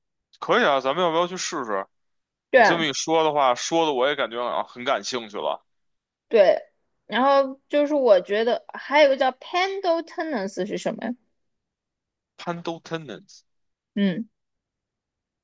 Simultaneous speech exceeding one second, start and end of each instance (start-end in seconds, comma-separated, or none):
none